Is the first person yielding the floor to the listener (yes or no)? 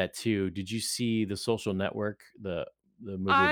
yes